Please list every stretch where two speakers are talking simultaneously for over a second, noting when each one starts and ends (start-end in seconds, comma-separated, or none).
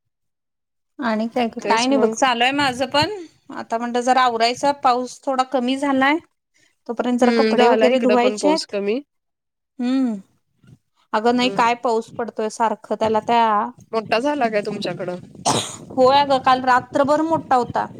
7.2-8.8